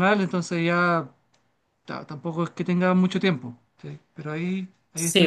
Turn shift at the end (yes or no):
yes